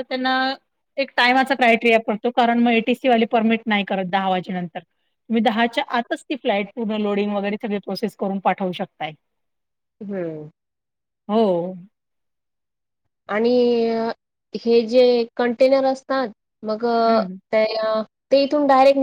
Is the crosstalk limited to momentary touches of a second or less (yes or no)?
yes